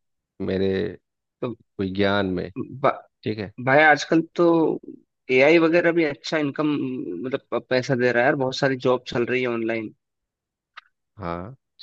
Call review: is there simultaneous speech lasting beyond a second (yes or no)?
no